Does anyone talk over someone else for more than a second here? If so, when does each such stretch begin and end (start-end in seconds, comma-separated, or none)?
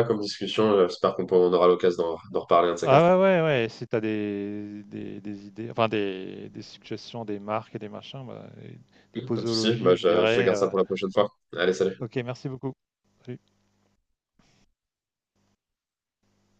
9.3-10.7